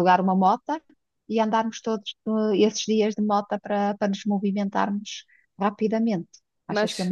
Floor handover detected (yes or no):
yes